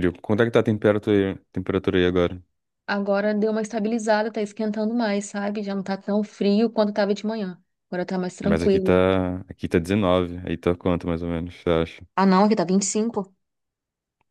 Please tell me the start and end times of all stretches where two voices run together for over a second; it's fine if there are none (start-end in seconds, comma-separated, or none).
none